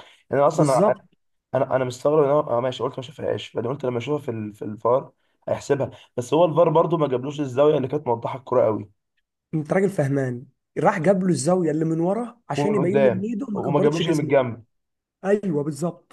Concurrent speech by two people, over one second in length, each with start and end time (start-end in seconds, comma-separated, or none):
12.6-14.4